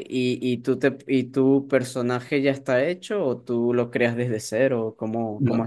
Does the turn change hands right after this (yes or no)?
yes